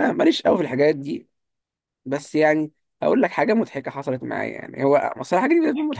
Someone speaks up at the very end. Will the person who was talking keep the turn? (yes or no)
yes